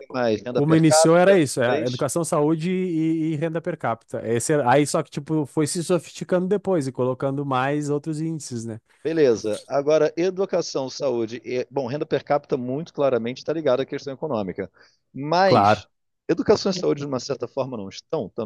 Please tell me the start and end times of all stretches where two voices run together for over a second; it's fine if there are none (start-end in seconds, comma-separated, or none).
0.5-2.0